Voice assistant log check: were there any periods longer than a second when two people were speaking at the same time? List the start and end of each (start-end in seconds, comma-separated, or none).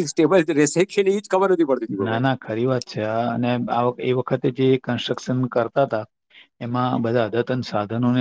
none